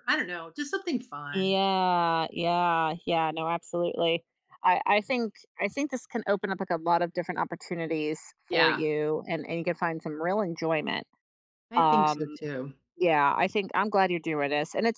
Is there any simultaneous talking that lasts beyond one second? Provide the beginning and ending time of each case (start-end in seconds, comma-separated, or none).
none